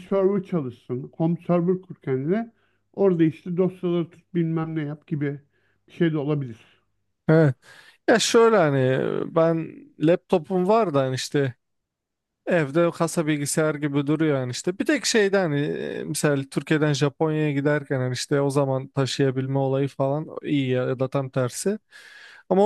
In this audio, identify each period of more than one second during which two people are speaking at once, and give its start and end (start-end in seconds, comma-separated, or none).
none